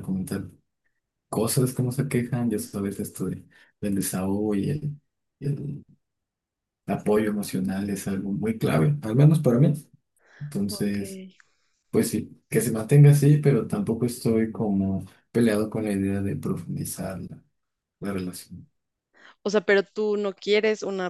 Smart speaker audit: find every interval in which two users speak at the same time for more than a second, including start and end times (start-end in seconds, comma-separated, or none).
none